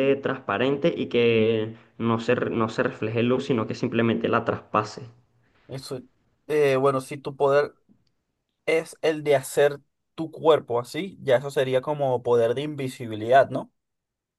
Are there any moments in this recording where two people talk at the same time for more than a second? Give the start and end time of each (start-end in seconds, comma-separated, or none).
none